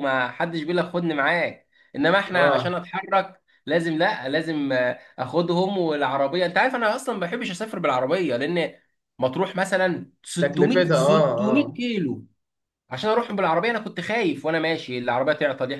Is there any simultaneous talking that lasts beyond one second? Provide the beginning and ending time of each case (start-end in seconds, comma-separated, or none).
10.4-11.8